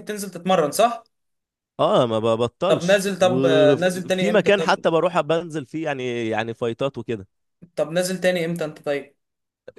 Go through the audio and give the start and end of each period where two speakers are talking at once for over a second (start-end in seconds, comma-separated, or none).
2.7-4.8